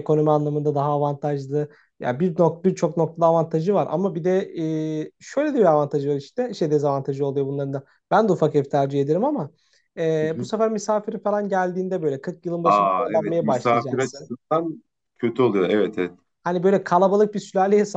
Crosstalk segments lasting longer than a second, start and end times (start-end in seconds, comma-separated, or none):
12.6-14.3